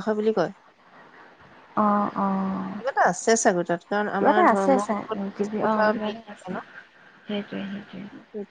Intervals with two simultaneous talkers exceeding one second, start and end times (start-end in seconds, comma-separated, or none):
4.2-6.5